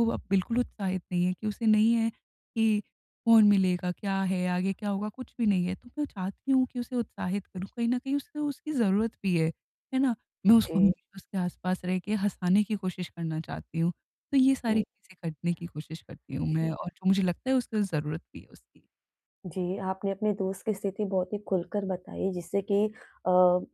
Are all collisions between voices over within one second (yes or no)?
yes